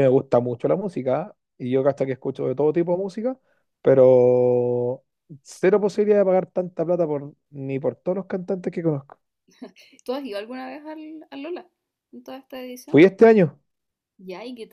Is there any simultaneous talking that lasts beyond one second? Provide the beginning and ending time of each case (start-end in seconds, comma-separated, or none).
none